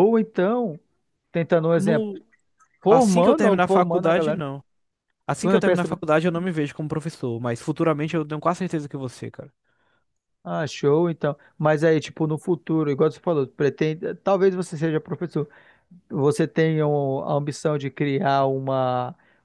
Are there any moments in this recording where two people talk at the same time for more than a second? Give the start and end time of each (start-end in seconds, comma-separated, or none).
2.9-4.5